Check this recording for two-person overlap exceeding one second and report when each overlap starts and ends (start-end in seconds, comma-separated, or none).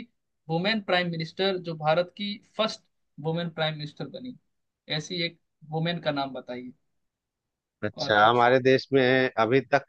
none